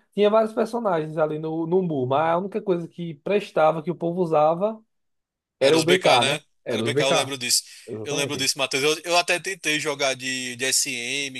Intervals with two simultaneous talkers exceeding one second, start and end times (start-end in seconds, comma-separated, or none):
5.6-7.3